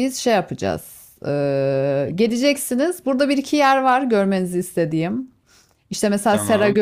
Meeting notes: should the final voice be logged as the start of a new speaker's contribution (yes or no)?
no